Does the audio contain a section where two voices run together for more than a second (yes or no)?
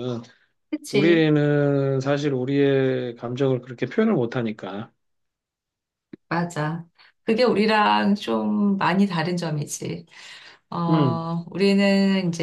no